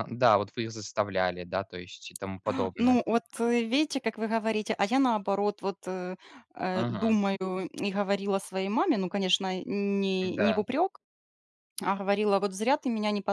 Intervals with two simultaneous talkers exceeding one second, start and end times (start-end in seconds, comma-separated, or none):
none